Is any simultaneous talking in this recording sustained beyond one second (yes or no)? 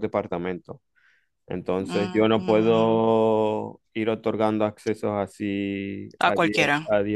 yes